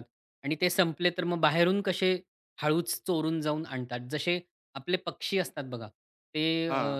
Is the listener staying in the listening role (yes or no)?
yes